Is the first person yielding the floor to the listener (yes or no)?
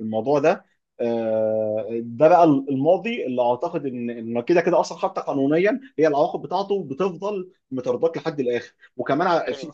no